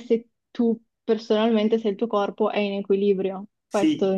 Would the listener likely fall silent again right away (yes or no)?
no